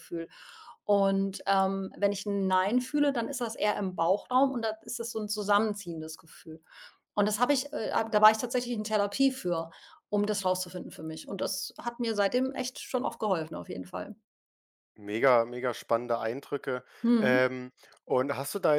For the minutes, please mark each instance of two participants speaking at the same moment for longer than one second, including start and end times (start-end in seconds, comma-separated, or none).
none